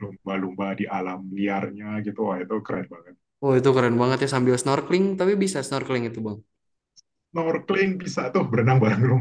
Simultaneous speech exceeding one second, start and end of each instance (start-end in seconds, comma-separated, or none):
none